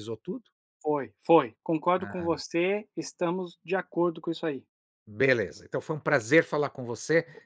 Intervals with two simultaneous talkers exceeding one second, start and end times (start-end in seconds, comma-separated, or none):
none